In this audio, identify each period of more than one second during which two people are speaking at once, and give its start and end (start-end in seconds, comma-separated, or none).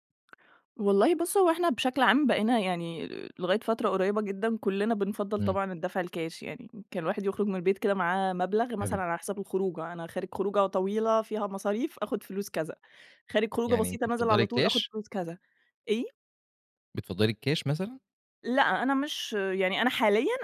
13.7-14.9